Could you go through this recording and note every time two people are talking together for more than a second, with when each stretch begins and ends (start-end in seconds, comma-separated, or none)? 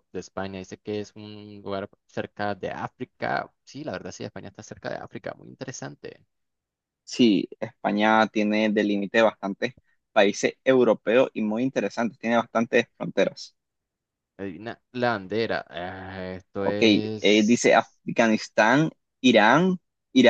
16.6-18.0